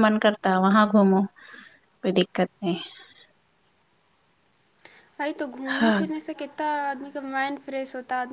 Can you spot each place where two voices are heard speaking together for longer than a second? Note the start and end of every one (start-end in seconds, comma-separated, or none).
none